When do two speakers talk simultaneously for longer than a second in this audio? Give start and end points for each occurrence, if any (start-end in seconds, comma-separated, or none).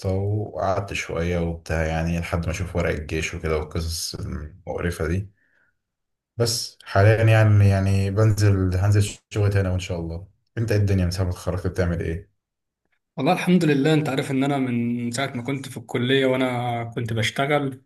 none